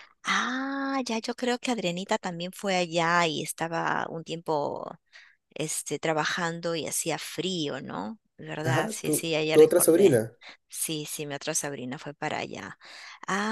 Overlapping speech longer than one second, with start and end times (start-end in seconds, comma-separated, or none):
8.6-10.2